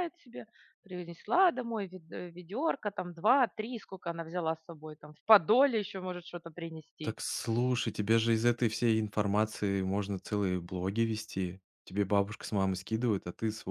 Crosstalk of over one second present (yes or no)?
no